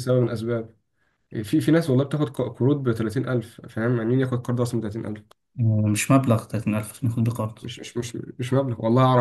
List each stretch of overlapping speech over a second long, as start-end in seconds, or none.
none